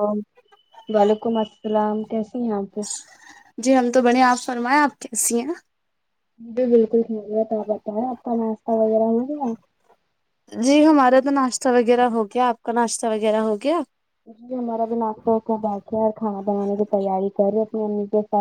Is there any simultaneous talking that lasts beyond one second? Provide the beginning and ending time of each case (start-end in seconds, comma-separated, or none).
none